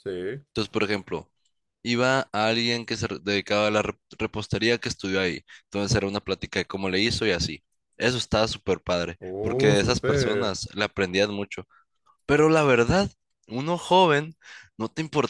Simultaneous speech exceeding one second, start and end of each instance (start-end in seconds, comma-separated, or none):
9.2-10.6